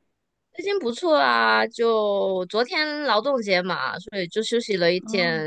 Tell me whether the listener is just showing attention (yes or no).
no